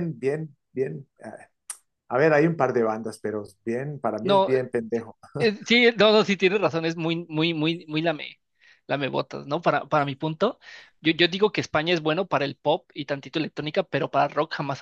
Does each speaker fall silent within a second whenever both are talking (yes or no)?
yes